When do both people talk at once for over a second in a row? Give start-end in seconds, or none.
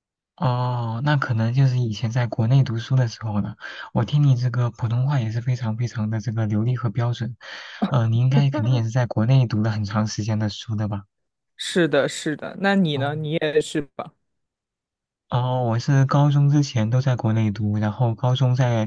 none